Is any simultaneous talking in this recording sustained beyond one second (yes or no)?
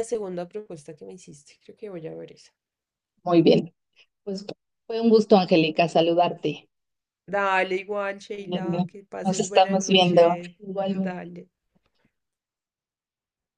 yes